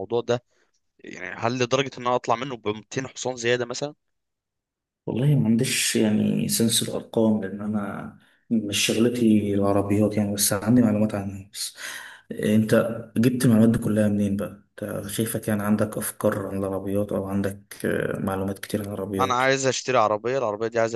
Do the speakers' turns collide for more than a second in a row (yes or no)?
no